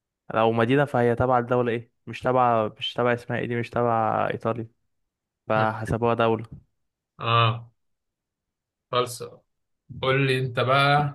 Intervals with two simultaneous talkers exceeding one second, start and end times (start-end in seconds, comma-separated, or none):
none